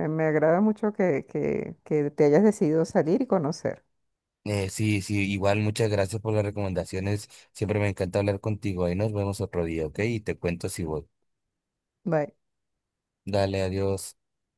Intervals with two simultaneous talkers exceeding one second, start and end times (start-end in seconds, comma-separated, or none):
none